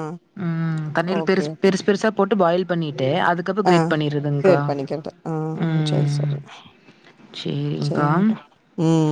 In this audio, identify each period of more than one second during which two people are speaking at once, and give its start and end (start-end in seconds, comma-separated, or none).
none